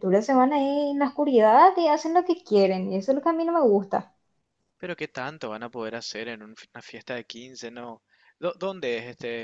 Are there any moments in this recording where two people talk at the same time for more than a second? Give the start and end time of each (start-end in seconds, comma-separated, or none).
none